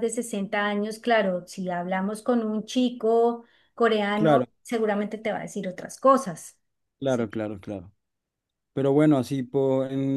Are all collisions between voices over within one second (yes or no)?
yes